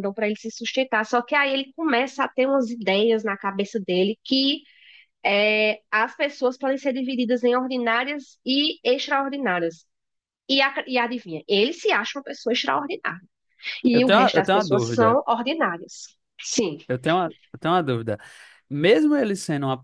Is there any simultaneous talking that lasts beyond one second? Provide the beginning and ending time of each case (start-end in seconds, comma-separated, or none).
13.9-15.2